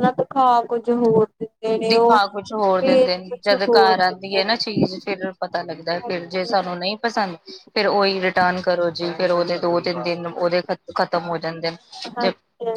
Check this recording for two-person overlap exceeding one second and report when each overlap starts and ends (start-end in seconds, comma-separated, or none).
2.8-4.5